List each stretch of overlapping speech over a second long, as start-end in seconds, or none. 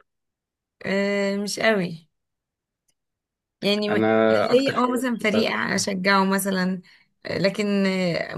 3.9-5.8